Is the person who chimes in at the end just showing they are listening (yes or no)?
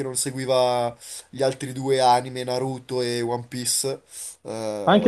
no